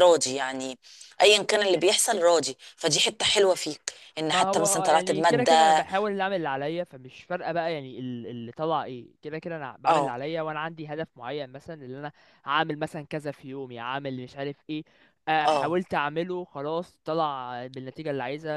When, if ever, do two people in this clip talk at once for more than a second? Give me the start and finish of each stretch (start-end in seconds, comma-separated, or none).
4.3-5.8